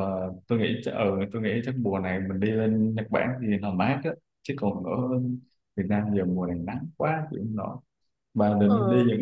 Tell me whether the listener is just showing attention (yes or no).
yes